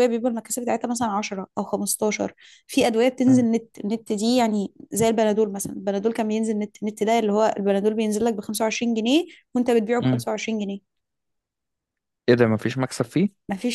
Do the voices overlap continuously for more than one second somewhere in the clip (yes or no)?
no